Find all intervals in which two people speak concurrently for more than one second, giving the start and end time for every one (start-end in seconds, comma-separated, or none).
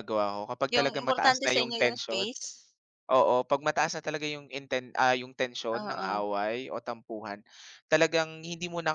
0.7-2.3